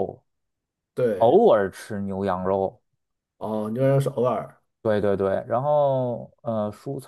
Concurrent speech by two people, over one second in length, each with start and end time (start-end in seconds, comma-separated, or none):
none